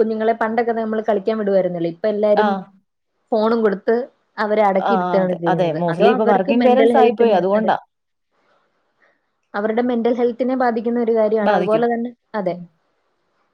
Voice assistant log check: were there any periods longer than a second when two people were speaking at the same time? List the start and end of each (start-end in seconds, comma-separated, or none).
4.9-7.7